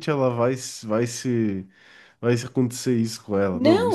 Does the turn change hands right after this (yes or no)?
yes